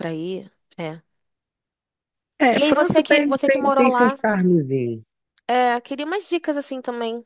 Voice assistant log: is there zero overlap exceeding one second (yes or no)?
no